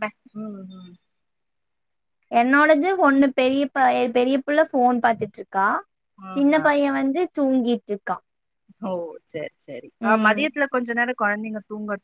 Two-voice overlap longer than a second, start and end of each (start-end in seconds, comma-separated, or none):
none